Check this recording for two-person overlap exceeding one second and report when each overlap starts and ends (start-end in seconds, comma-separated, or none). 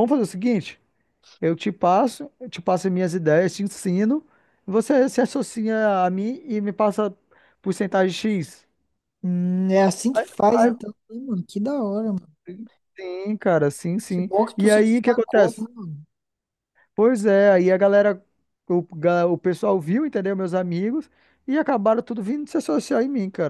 14.1-15.7